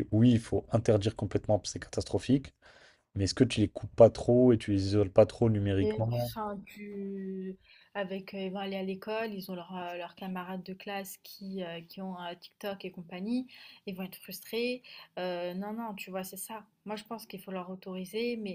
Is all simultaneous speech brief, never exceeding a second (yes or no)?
yes